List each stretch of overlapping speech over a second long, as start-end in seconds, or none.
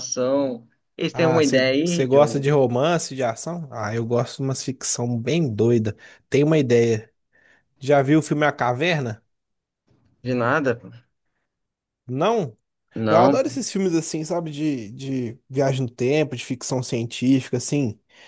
1.2-2.4